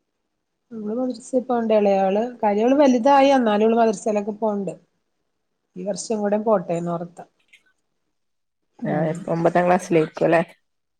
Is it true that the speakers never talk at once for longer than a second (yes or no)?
yes